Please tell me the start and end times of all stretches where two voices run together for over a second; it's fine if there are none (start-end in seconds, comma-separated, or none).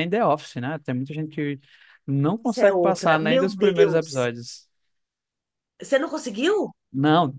2.4-4.3